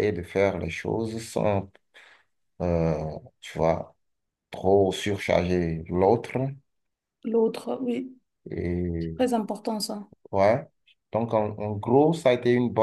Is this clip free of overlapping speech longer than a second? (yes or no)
yes